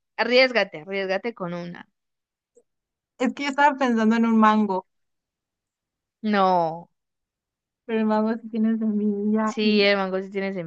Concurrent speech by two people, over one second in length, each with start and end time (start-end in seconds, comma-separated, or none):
none